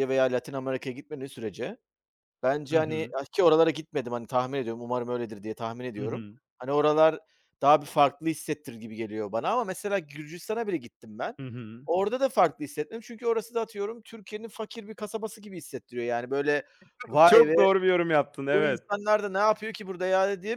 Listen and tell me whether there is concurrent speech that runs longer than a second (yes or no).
no